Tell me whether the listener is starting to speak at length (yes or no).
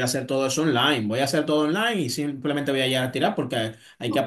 no